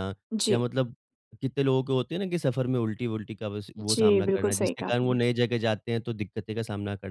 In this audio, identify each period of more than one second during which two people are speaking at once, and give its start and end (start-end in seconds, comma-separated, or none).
3.8-5.2